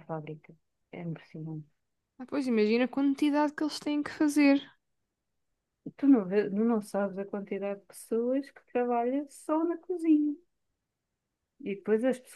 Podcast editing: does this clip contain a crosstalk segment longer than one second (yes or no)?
no